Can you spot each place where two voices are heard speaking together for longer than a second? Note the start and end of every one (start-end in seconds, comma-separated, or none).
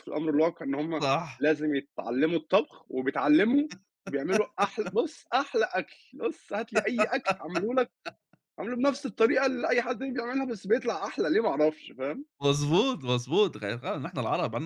none